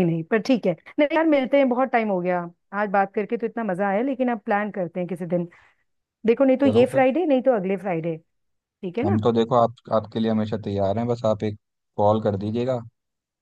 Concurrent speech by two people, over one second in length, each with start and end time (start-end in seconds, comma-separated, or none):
none